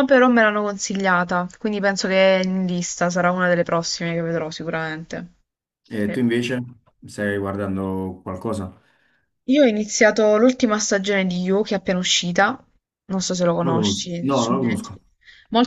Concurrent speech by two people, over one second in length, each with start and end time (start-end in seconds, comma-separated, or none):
13.6-15.0